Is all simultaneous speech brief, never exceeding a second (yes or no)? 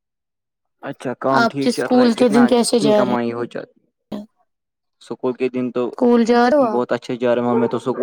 no